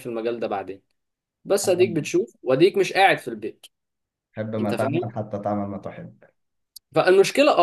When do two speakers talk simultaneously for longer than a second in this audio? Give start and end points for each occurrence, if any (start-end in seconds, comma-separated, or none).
none